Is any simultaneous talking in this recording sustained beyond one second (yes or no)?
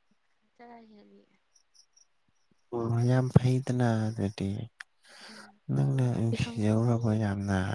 yes